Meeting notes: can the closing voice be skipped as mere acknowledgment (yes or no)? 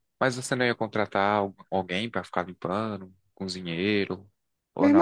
no